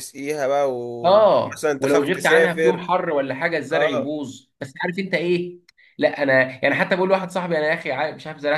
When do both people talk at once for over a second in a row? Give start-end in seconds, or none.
1.0-2.9